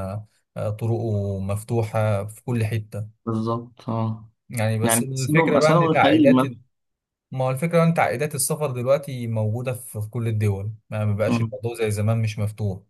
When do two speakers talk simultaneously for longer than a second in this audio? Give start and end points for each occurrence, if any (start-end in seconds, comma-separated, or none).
4.8-6.6